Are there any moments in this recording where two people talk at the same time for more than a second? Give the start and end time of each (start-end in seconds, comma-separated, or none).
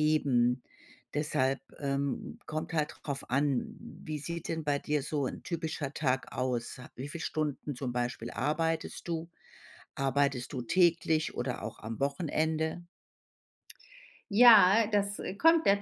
none